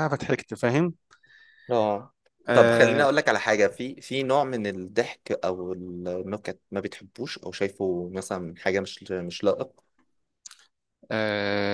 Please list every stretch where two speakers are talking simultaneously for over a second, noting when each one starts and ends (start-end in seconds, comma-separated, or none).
none